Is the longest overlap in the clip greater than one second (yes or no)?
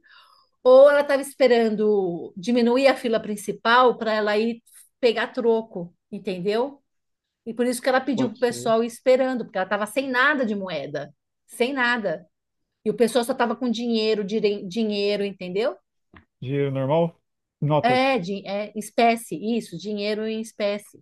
no